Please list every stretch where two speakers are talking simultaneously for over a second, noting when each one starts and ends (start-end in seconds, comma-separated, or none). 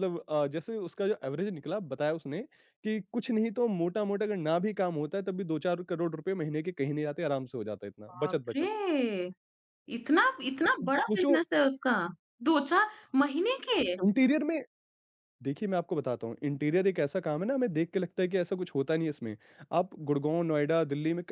none